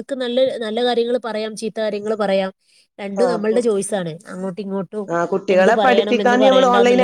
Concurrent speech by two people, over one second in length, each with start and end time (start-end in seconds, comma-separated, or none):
none